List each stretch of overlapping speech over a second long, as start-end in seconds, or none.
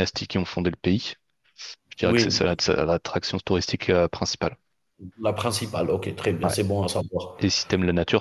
none